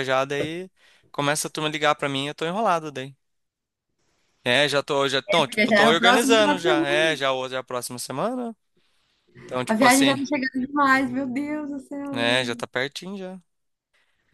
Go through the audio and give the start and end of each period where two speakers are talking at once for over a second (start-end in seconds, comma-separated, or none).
5.3-7.2